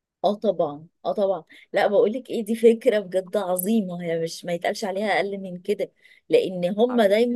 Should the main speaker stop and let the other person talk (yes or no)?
no